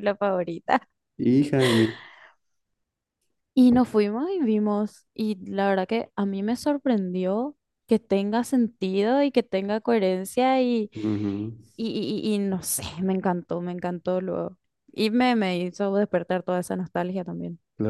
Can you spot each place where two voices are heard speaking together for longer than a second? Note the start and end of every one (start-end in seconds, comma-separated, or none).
none